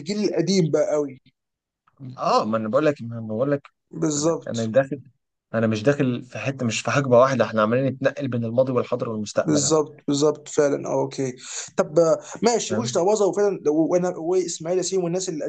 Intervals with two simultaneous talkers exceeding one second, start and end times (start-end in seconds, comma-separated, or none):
none